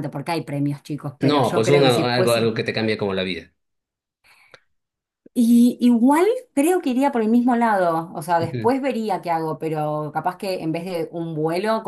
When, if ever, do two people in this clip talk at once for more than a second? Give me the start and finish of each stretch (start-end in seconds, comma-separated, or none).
1.2-2.5